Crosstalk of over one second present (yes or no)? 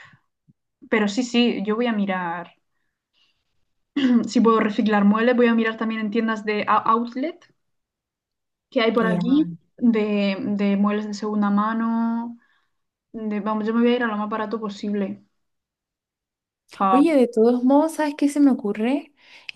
no